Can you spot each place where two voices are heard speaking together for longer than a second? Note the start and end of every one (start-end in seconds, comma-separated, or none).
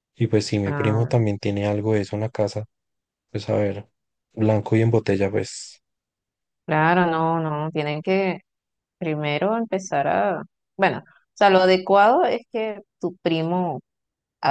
none